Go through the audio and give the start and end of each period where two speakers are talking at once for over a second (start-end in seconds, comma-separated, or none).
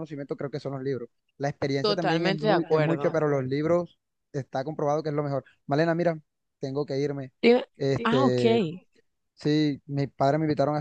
1.8-3.1